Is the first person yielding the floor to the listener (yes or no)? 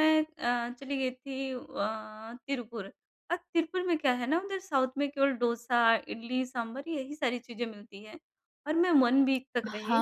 no